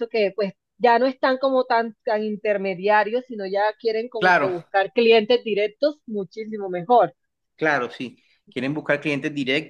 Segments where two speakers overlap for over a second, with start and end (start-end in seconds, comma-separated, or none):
none